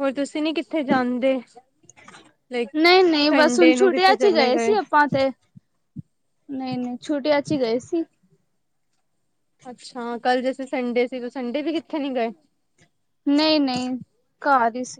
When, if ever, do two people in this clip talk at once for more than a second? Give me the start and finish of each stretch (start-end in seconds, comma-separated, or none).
3.3-4.7